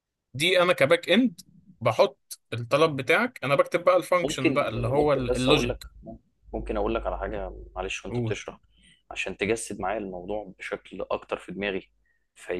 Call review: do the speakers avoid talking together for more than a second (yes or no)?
no